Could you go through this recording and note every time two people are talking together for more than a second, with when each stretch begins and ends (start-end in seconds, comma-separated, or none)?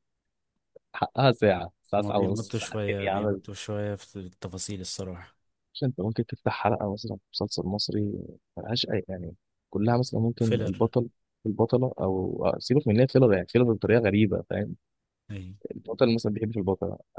2.0-3.4